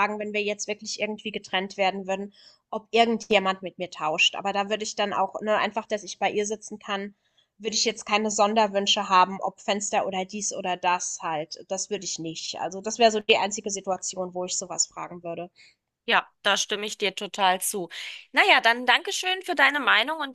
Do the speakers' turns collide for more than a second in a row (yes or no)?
no